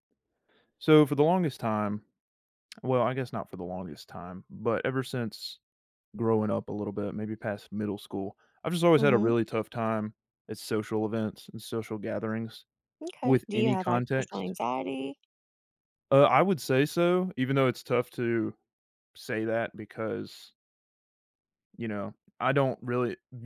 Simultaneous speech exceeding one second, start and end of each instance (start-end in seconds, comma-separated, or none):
13.2-14.5